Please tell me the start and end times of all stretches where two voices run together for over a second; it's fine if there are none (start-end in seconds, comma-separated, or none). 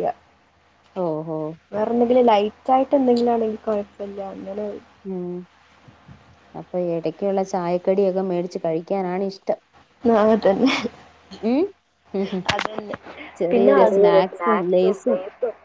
13.5-15.2